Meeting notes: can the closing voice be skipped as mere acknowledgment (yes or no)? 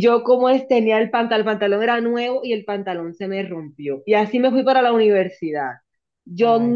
yes